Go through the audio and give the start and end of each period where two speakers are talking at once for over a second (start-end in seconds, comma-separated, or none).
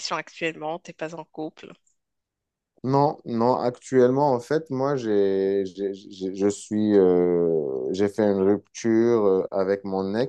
none